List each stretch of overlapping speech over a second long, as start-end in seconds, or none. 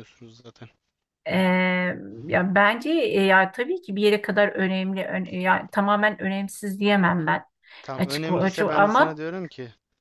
8.0-9.2